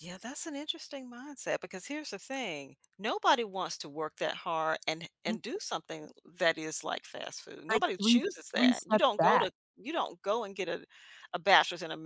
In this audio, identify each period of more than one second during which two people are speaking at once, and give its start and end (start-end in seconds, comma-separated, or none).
7.7-9.5